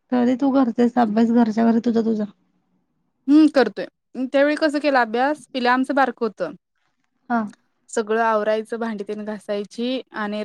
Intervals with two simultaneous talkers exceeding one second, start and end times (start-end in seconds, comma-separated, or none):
none